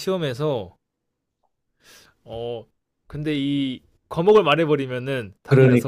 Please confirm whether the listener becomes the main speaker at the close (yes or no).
yes